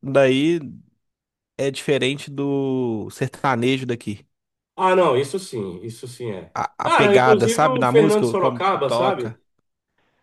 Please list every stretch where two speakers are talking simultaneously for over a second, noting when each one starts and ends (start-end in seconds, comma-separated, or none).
6.5-9.4